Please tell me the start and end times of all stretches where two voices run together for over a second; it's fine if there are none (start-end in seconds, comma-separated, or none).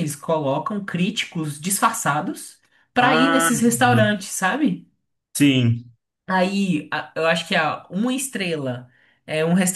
3.0-4.2